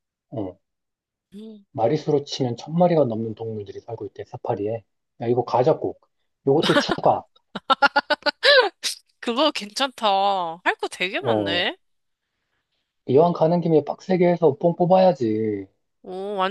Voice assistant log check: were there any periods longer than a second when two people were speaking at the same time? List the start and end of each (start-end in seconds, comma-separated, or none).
none